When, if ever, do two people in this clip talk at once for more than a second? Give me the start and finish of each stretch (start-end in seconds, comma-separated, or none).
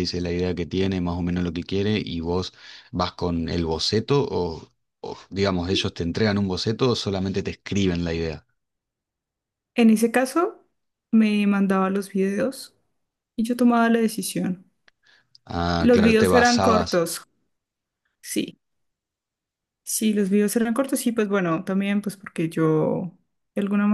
15.8-17.1